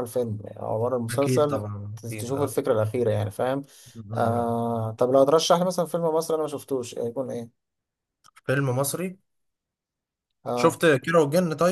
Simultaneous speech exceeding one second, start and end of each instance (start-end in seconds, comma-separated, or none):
1.1-2.6